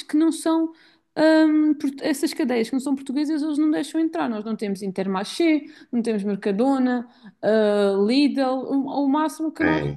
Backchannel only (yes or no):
no